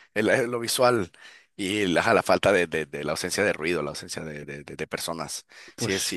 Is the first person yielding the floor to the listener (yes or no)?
no